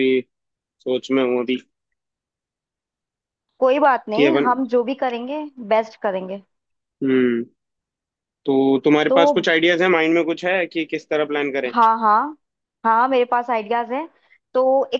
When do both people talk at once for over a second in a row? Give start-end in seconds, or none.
none